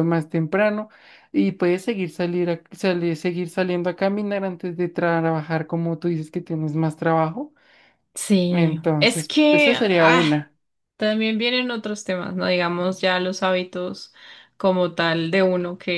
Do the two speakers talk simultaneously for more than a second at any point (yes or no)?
yes